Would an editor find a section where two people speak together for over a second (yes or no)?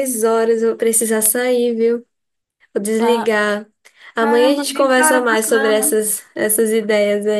yes